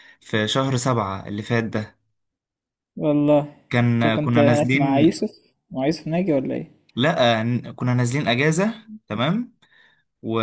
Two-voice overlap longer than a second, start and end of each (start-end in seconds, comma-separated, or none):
3.9-5.2